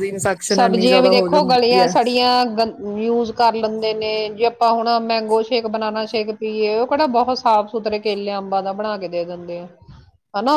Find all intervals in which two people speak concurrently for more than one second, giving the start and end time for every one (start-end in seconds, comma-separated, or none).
0.5-1.9